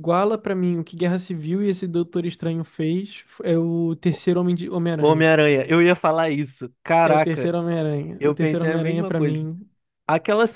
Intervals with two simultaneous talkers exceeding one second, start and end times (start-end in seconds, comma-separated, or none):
8.2-9.4